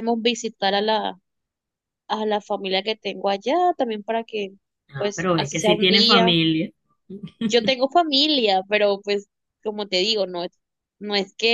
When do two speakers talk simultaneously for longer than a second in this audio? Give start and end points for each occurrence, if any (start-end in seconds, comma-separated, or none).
5.0-6.3